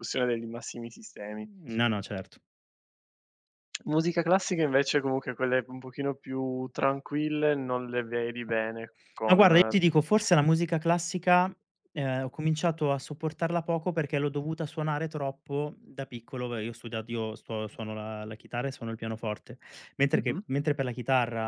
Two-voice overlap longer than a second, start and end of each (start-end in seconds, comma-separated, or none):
none